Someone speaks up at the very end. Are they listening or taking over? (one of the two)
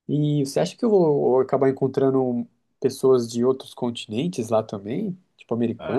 taking over